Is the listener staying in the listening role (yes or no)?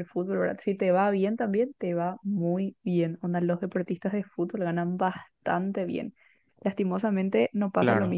yes